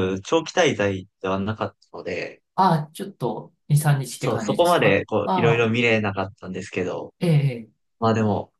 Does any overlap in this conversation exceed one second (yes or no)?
yes